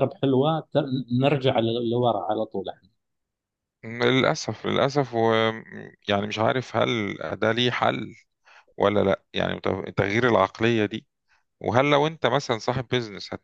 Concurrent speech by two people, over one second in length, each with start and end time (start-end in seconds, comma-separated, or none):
none